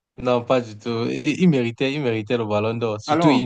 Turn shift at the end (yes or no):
no